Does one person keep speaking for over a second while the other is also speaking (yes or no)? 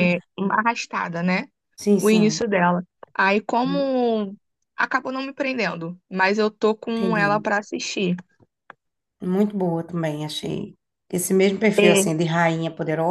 no